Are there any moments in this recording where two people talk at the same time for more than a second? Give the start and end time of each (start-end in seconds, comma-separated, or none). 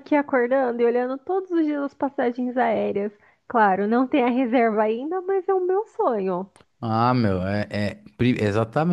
none